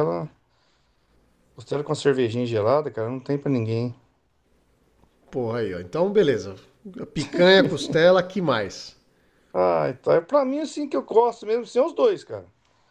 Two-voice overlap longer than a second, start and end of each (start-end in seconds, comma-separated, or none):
none